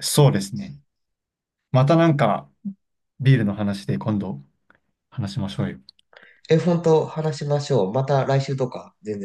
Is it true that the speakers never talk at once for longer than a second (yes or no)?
yes